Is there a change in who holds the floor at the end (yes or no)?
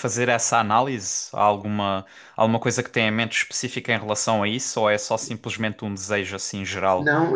yes